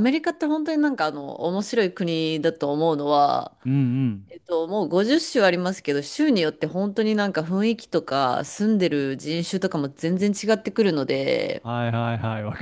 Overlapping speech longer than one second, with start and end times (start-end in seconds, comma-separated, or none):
none